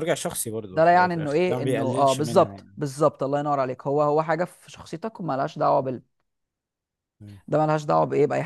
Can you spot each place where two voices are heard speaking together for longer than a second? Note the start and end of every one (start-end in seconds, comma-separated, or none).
0.7-2.6